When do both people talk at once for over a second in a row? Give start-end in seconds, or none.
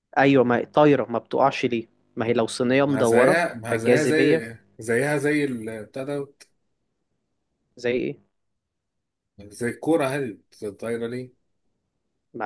2.8-4.5